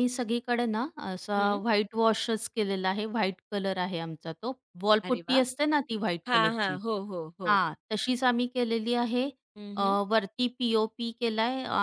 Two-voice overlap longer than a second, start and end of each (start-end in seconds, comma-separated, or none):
none